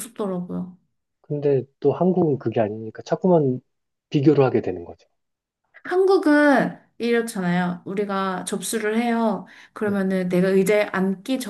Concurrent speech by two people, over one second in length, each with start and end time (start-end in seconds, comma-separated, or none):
none